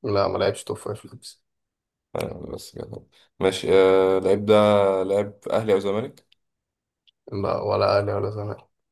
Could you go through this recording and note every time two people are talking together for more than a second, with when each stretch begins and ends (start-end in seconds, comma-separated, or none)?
none